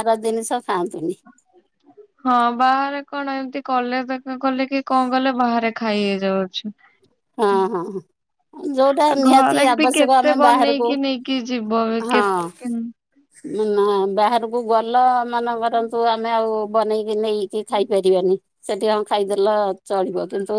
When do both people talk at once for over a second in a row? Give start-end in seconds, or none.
9.1-10.9